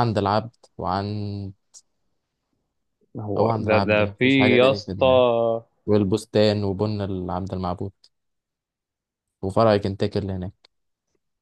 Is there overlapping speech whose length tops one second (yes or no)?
yes